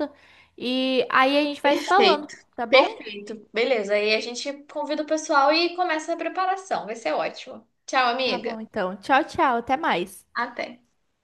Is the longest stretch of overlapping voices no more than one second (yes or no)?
no